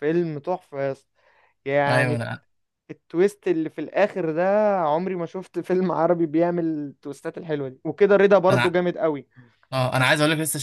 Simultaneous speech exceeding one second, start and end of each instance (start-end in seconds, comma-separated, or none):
none